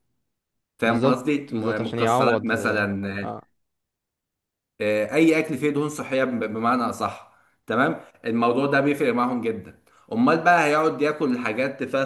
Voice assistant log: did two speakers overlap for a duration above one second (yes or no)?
yes